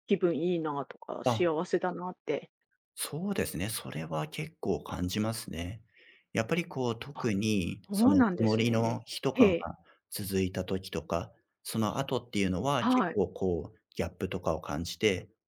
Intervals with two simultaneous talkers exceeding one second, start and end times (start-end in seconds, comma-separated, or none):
7.9-9.5